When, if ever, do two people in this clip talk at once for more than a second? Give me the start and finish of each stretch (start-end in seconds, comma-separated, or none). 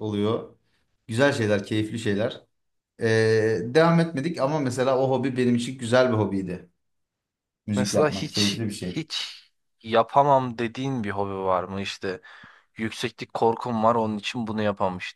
7.8-9.1